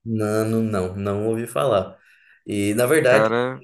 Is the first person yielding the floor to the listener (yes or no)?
no